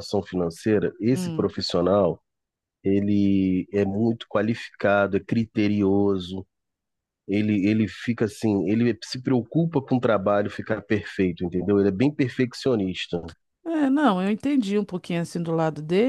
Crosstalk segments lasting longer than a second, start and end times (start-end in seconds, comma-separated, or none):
none